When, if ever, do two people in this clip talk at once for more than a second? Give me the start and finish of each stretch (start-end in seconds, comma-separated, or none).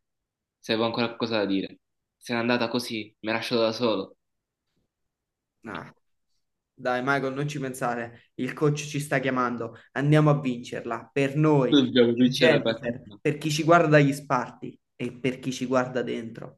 11.7-13.2